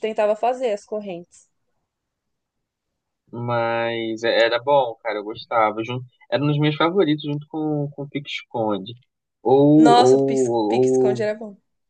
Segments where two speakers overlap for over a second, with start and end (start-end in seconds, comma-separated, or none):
9.8-11.3